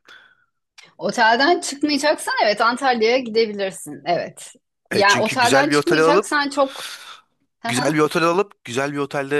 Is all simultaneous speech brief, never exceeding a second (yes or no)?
no